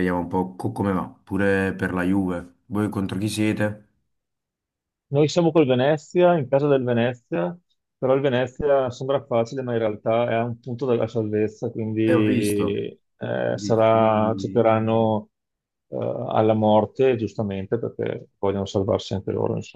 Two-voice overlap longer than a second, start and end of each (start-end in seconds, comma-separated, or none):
13.5-14.7